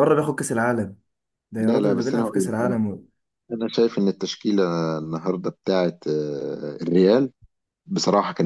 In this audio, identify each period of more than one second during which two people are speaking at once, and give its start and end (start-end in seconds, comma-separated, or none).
1.6-2.8